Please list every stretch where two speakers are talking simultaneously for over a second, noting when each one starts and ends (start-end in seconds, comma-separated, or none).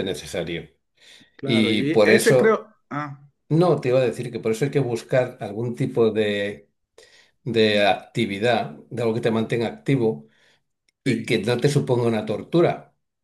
1.4-2.7